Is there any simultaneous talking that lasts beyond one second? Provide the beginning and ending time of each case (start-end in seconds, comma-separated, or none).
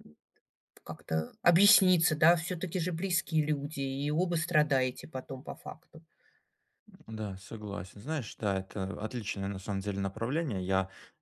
none